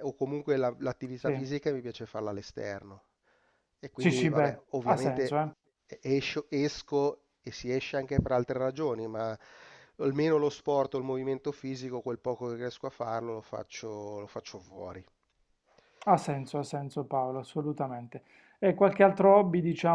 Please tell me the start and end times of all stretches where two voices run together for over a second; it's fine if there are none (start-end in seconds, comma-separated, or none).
4.0-5.4